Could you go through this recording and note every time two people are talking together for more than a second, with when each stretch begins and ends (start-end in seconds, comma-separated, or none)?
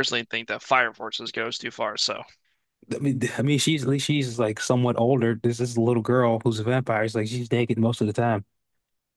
none